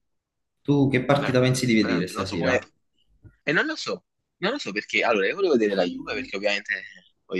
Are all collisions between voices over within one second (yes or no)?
no